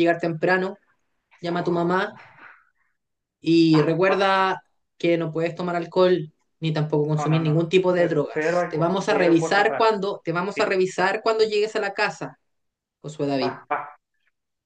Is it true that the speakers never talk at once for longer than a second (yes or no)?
no